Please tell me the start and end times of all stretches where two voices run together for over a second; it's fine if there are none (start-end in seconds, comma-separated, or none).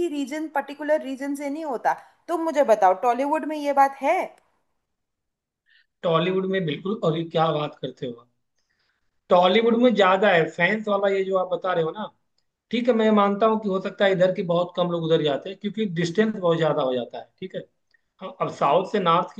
none